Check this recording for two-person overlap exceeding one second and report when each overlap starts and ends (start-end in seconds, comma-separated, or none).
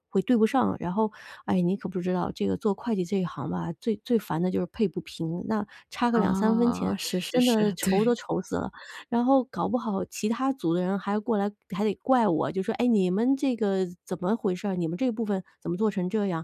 6.1-8.2